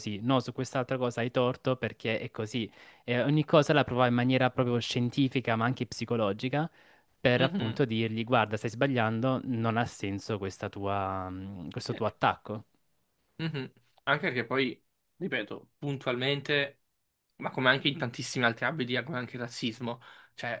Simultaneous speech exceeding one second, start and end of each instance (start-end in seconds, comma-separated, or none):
none